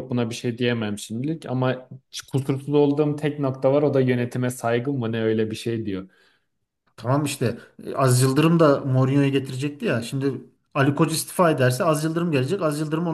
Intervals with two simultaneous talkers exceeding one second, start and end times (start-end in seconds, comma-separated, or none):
none